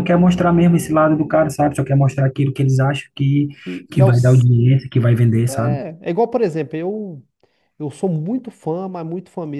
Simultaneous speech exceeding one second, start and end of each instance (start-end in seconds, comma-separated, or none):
none